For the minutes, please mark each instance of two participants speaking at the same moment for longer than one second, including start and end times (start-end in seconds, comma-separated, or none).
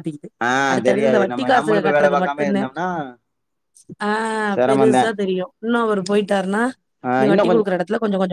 0.9-2.6